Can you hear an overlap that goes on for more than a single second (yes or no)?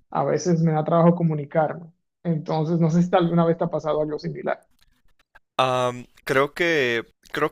no